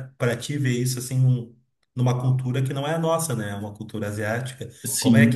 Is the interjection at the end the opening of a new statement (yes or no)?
no